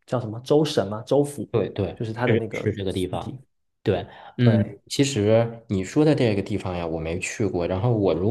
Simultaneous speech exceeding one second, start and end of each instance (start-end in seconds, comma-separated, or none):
1.9-3.3